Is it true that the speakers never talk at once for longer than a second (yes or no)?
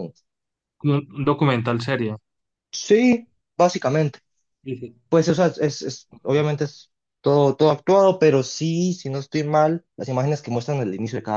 yes